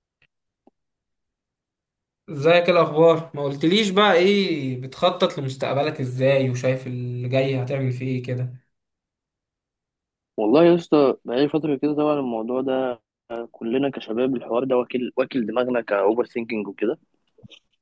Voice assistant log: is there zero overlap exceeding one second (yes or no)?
yes